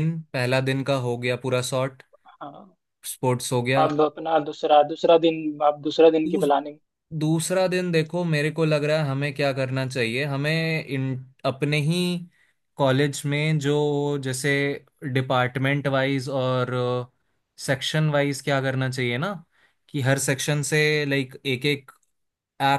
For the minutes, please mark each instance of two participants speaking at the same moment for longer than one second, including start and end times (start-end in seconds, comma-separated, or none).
none